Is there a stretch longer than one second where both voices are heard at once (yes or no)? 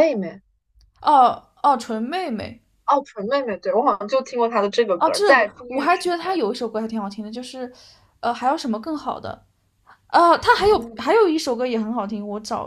yes